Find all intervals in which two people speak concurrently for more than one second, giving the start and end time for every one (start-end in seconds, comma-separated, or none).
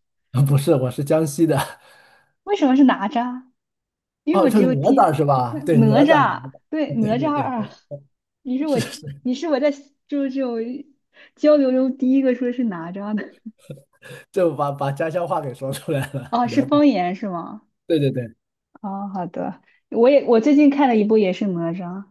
4.3-7.5